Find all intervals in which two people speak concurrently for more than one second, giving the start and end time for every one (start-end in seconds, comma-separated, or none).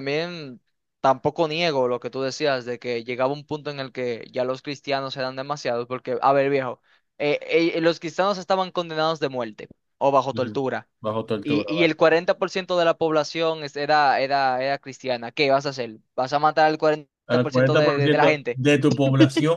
17.3-18.6